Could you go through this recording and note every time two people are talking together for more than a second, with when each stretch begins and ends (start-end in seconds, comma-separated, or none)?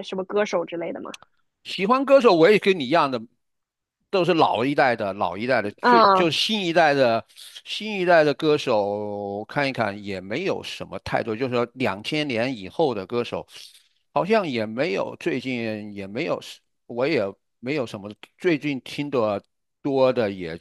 none